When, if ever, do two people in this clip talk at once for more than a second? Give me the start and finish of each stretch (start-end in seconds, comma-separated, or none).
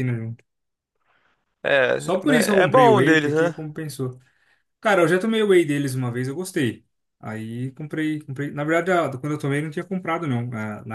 2.0-3.5